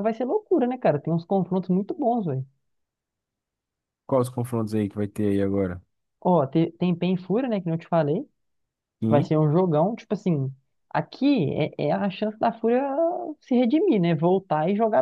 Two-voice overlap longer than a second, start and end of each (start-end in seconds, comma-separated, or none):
none